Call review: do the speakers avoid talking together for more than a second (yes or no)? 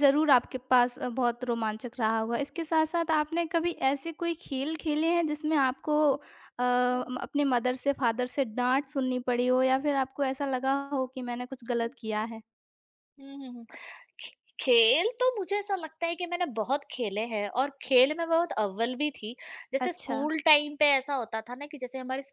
yes